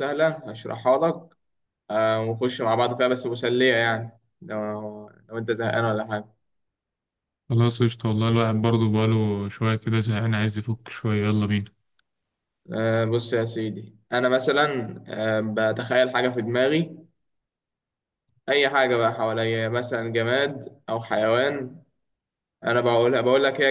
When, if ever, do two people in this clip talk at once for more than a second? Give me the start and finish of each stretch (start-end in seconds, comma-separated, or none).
none